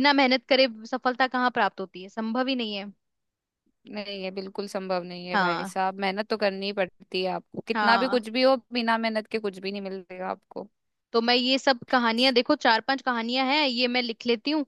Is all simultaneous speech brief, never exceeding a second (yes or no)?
yes